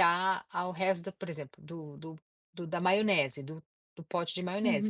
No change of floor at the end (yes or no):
no